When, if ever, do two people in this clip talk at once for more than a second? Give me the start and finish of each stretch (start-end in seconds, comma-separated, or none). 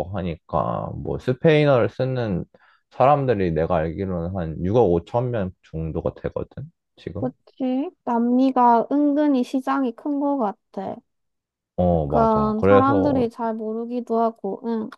11.9-13.3